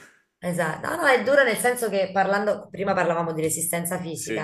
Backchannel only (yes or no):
yes